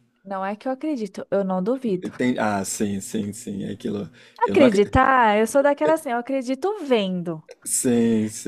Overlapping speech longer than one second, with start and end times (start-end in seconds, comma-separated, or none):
none